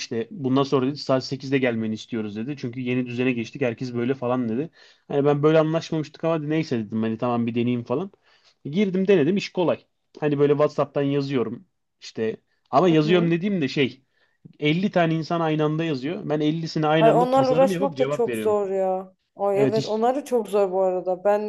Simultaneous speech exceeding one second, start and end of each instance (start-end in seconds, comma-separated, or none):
17.0-18.6